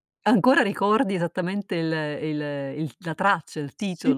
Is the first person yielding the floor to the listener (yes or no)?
yes